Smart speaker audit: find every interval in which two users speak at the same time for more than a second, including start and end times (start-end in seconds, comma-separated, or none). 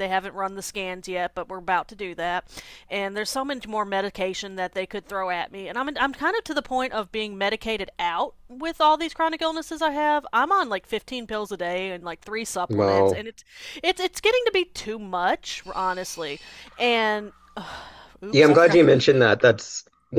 none